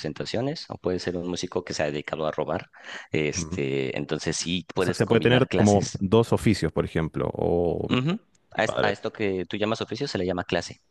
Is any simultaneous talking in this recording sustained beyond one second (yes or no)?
yes